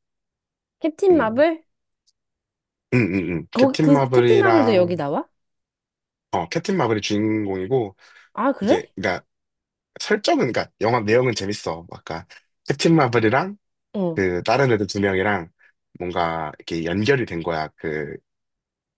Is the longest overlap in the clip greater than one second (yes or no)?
yes